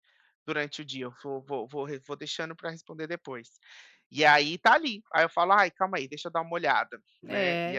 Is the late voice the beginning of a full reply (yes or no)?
yes